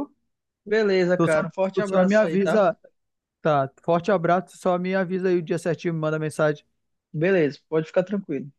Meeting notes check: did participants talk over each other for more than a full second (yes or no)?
yes